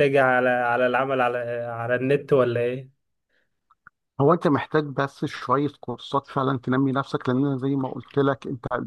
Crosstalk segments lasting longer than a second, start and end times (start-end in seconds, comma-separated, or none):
none